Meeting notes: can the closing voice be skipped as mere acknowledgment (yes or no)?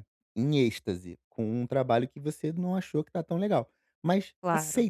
yes